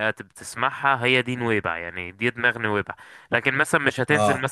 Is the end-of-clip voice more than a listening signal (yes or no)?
yes